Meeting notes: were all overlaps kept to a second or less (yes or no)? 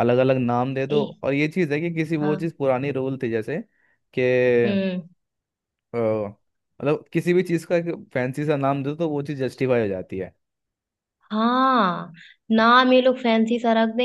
yes